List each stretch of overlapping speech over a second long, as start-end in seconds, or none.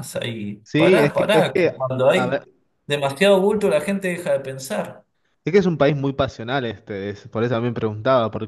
0.6-2.4